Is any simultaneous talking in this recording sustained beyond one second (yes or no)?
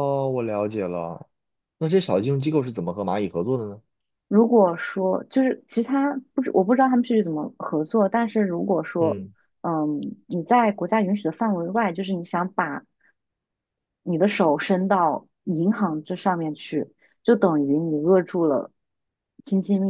no